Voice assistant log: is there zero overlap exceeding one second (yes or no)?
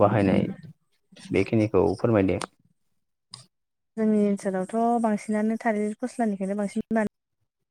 yes